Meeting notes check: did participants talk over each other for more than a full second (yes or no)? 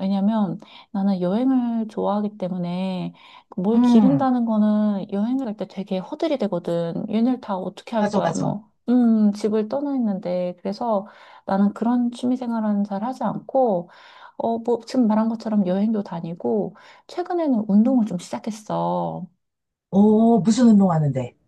no